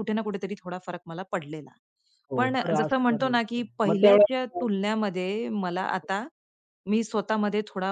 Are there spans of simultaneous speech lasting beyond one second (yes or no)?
yes